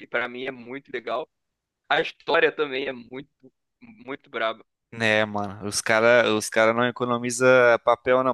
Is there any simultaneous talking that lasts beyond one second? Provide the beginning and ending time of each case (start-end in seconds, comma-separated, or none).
none